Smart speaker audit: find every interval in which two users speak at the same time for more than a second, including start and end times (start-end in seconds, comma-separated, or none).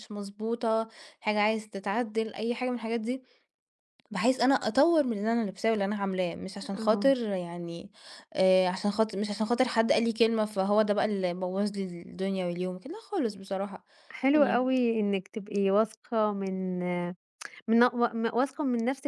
none